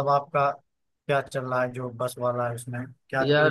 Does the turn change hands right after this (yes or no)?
yes